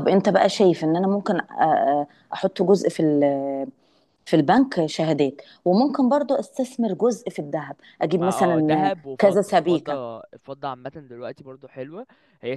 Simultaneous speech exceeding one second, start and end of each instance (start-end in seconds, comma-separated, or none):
8.2-10.0